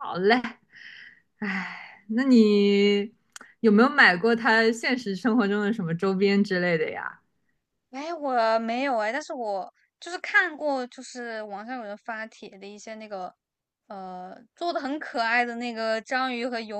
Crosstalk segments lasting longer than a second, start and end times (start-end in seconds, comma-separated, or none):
none